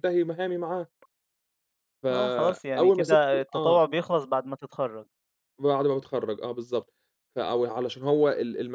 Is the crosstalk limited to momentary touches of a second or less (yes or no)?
no